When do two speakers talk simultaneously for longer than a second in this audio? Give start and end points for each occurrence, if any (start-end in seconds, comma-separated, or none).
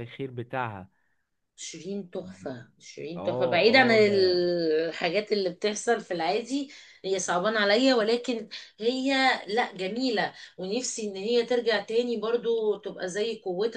3.1-4.4